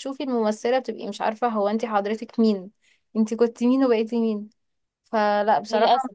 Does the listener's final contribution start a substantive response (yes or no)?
no